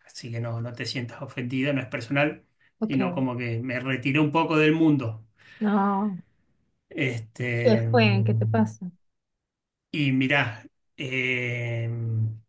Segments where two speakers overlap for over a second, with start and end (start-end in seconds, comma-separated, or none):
none